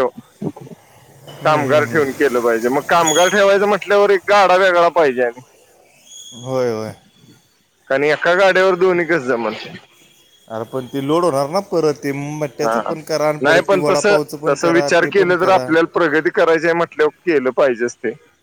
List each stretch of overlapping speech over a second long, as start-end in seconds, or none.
13.4-15.6